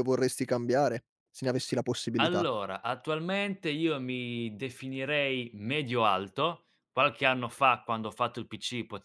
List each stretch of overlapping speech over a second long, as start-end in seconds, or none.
none